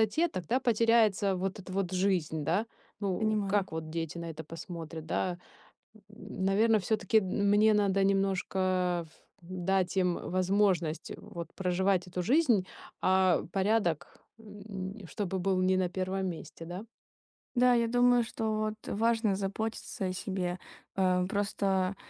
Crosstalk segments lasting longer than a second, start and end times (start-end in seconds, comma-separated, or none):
none